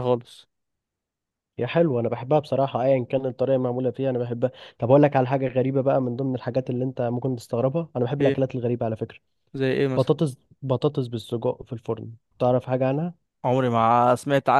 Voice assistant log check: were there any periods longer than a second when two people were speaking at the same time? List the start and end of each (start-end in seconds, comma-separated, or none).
none